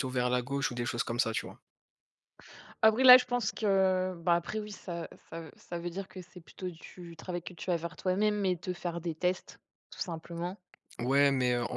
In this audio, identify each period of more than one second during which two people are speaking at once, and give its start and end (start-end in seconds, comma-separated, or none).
none